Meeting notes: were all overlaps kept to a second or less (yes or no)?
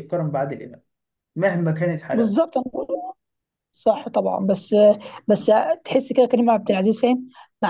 yes